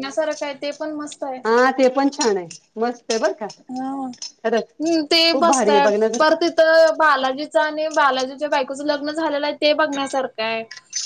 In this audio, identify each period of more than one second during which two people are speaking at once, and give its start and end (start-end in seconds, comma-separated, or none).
4.3-6.2